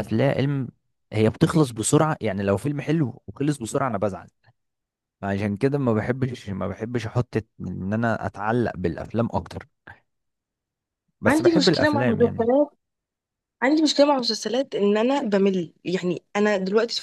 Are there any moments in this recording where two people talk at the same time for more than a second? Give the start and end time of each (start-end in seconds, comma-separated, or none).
11.3-12.5